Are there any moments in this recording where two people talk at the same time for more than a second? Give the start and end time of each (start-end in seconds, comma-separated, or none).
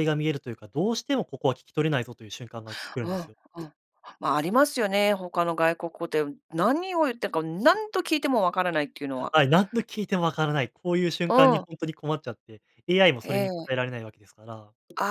none